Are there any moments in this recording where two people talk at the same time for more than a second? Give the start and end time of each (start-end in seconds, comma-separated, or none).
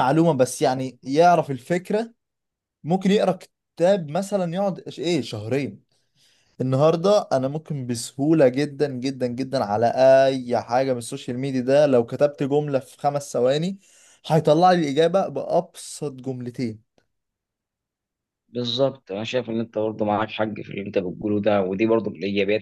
none